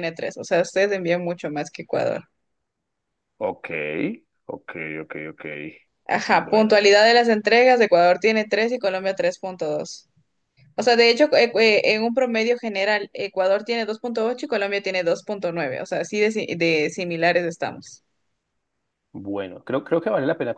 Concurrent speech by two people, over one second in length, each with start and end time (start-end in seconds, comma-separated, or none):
none